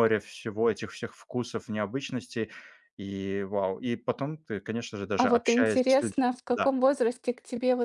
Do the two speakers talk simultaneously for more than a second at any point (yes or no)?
yes